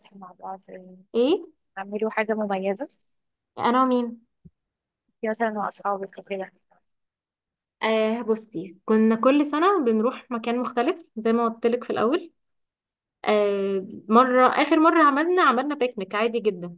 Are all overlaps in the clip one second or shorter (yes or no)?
yes